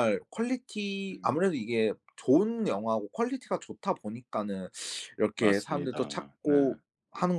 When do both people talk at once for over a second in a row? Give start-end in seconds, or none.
5.4-6.8